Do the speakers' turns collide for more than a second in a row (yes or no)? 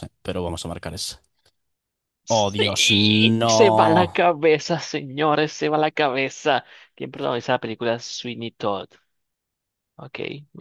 yes